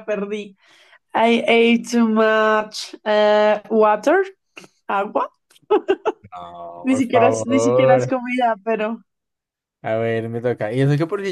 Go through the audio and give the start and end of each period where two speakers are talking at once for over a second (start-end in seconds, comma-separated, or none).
6.8-8.1